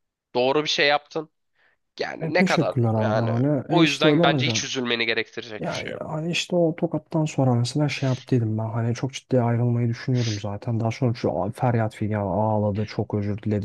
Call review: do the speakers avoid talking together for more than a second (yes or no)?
no